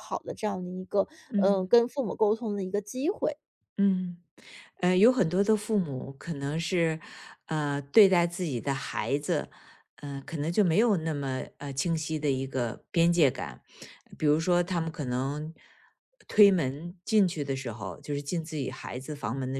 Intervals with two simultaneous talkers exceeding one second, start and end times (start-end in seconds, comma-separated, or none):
none